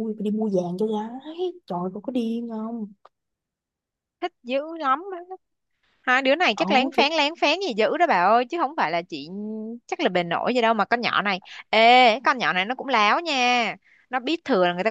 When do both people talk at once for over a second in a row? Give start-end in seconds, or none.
none